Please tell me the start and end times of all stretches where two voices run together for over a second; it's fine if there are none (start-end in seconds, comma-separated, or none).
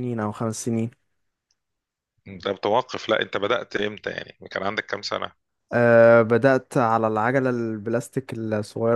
none